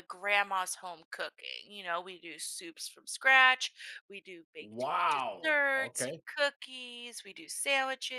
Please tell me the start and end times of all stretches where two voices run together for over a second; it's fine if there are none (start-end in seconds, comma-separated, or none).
4.6-6.2